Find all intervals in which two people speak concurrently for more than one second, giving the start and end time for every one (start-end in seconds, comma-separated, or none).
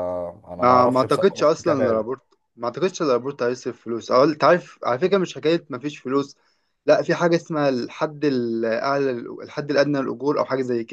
0.6-2.0